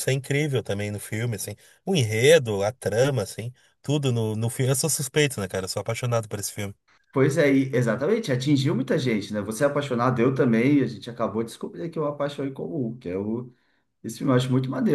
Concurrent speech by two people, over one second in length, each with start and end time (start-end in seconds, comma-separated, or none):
none